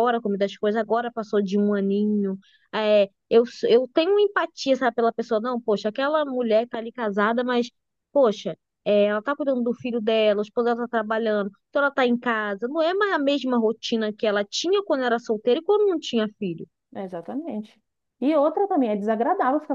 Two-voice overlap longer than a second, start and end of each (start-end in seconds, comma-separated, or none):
none